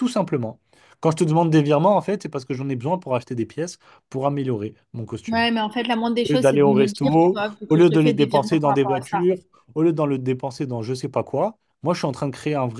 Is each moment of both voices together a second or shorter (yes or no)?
no